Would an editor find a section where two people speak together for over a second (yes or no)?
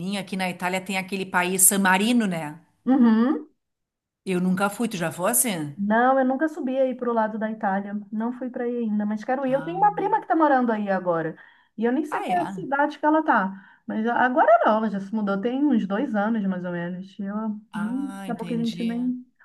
yes